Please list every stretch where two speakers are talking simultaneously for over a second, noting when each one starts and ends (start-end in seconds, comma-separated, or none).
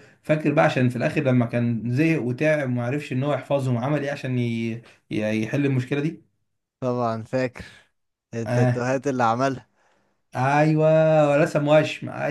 none